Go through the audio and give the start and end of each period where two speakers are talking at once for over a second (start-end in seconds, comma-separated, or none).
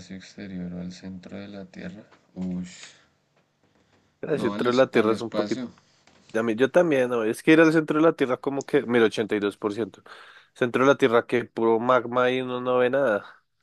4.3-5.6